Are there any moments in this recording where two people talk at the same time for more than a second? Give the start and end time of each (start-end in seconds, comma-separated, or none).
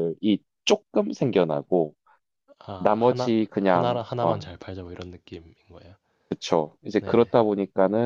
2.8-4.4